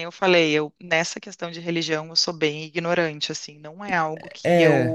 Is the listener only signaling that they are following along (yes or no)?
no